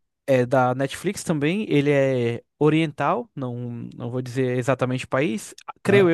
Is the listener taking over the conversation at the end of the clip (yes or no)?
no